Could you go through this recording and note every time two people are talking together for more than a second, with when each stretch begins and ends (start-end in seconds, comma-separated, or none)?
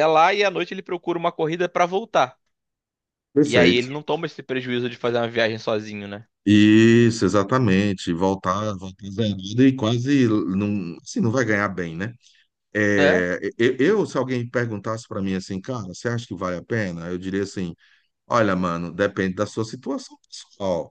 none